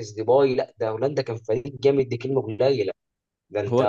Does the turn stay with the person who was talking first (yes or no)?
no